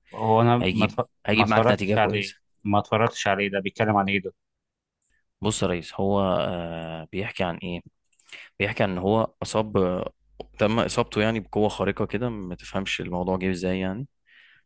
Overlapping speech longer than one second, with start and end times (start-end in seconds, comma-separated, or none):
0.6-2.3